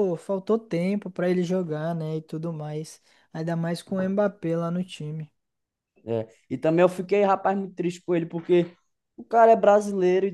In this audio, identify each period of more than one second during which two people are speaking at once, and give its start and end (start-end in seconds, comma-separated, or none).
none